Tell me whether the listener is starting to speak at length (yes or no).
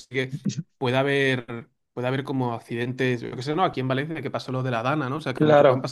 no